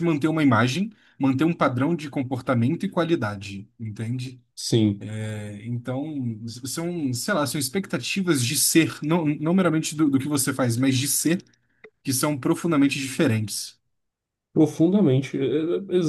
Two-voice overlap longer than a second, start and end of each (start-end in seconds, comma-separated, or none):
none